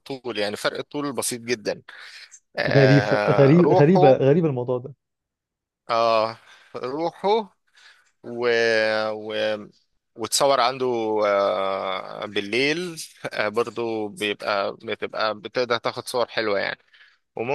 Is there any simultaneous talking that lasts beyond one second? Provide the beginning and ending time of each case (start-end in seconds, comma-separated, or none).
2.7-4.2